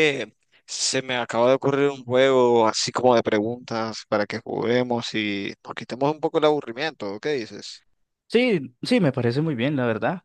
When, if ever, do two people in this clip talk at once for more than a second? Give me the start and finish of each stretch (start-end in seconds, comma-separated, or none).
none